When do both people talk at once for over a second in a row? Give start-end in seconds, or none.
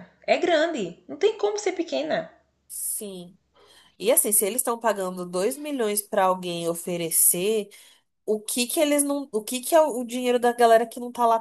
none